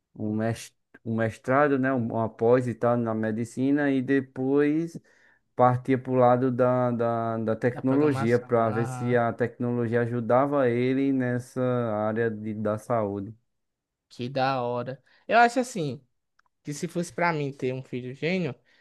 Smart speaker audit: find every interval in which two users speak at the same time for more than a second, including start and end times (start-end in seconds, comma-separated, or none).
7.7-9.2